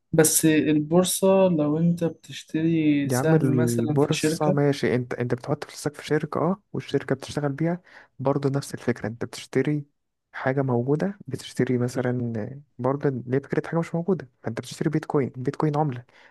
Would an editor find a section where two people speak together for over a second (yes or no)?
yes